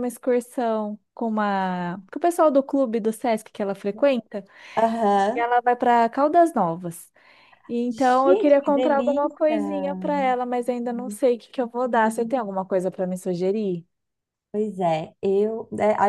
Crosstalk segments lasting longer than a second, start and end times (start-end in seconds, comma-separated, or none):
7.9-9.6